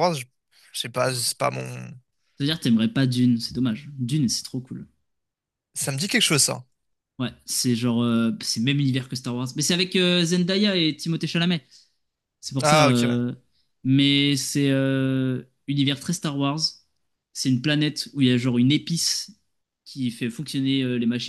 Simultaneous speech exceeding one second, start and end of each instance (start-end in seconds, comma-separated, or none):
none